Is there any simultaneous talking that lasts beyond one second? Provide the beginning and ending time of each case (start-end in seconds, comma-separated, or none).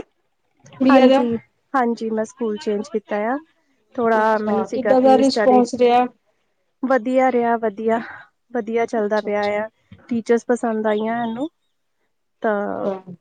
4.2-5.6